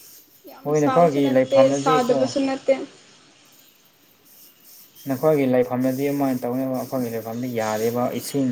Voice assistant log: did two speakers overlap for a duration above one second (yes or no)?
yes